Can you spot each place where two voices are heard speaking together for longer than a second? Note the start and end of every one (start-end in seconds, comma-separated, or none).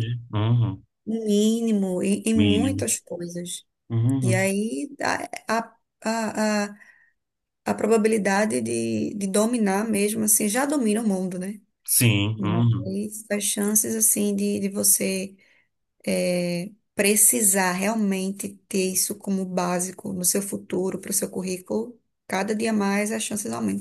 none